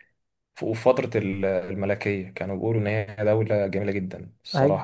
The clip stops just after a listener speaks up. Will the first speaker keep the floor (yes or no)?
no